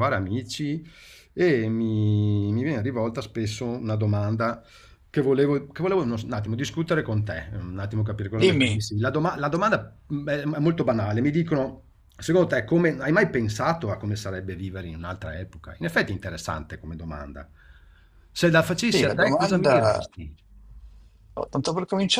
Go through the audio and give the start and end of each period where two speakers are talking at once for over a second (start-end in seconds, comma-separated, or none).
18.7-20.1